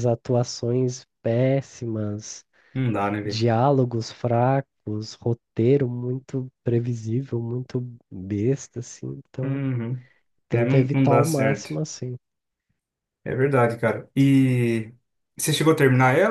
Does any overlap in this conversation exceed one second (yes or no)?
yes